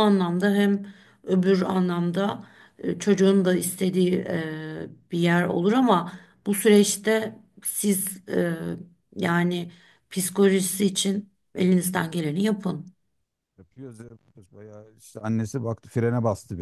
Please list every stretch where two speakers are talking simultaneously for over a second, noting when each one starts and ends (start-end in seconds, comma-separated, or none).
none